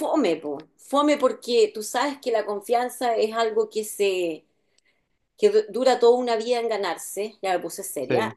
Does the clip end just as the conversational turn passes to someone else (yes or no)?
no